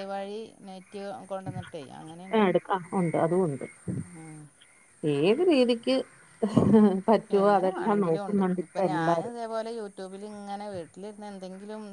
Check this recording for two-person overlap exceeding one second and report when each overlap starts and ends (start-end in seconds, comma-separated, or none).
7.4-9.3